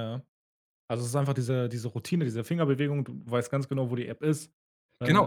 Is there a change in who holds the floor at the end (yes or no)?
yes